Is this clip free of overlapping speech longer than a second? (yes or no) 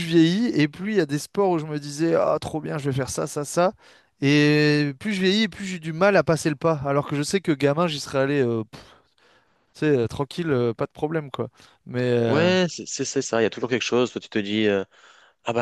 yes